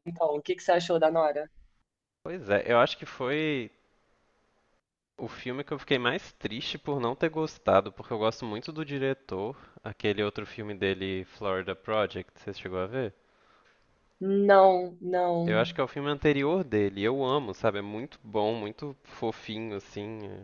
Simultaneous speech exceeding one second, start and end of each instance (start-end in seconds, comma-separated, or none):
none